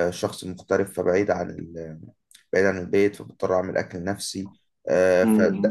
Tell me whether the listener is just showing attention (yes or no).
no